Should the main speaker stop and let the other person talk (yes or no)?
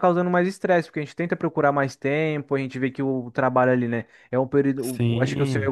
no